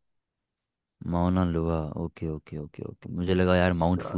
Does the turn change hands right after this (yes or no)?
no